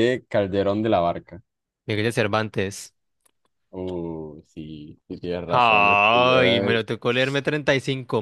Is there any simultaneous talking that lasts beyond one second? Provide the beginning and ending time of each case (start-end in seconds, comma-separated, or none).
5.5-6.8